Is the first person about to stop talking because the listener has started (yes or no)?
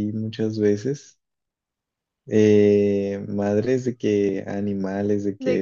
no